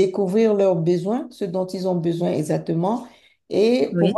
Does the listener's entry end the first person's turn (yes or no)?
no